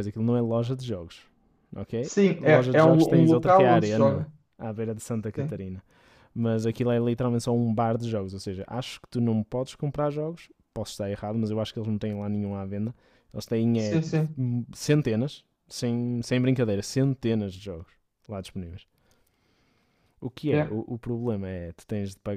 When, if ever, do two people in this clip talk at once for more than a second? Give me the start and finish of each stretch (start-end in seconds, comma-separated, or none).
2.0-4.2